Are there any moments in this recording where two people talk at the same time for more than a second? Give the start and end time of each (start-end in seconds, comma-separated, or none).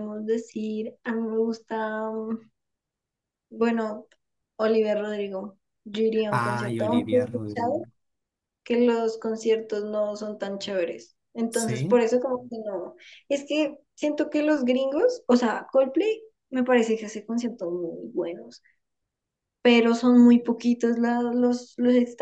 6.3-7.9